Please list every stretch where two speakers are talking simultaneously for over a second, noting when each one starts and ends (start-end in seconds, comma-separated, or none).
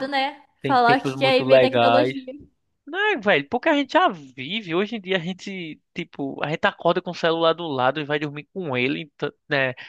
0.6-2.1